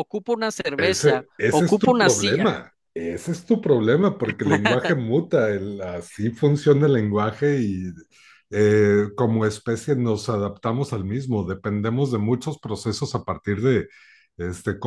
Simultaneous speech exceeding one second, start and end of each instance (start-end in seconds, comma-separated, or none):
0.8-2.5